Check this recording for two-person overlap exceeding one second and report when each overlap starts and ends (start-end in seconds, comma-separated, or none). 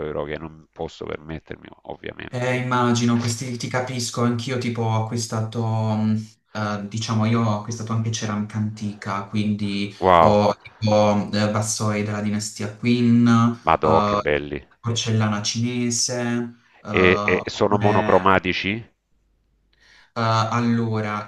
16.9-18.1